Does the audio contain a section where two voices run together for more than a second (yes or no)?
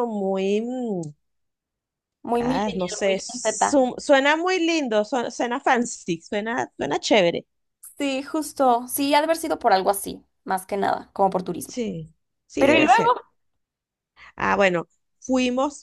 yes